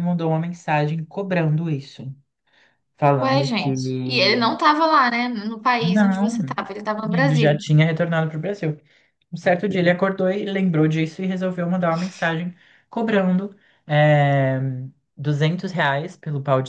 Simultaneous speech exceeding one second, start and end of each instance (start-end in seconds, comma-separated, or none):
none